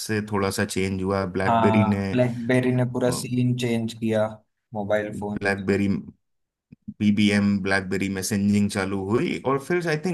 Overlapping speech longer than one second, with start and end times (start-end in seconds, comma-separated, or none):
none